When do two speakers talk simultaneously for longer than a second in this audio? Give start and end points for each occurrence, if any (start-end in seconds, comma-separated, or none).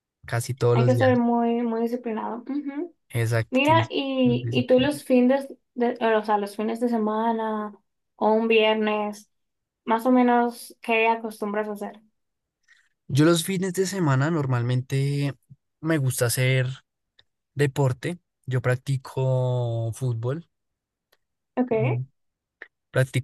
3.5-4.9